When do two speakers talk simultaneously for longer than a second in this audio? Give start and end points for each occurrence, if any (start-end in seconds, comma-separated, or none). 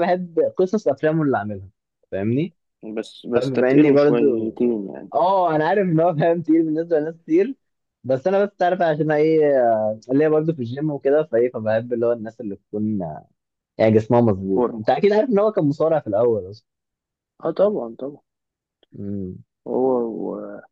3.4-4.6